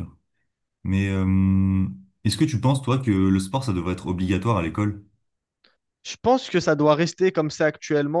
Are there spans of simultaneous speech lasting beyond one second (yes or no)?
no